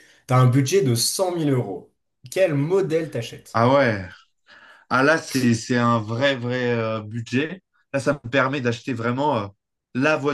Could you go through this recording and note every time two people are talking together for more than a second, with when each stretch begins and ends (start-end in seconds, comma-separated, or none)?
none